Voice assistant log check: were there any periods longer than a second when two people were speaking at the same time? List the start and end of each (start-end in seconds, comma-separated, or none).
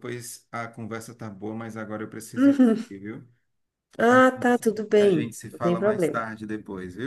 4.1-6.2